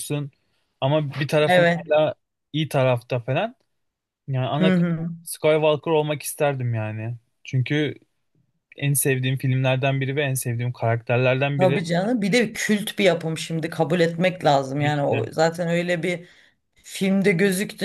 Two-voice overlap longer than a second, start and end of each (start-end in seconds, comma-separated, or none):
none